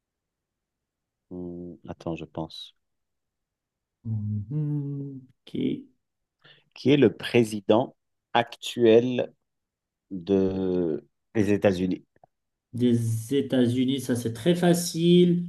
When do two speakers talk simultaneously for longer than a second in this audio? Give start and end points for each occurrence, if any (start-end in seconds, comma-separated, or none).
none